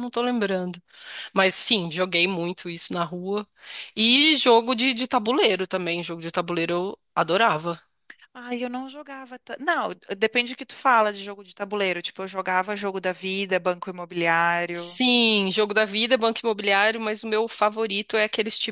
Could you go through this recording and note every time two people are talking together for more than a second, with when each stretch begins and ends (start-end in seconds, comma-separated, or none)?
none